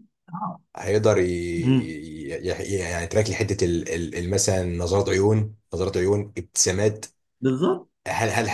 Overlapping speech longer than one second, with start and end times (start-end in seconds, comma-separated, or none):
none